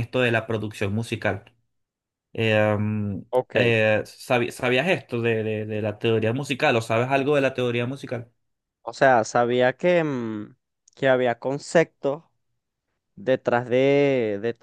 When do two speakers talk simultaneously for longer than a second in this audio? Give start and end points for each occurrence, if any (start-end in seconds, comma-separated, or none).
none